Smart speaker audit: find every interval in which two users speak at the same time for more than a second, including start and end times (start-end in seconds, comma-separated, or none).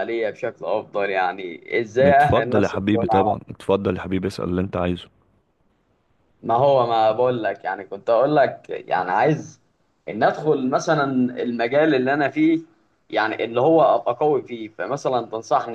2.0-3.4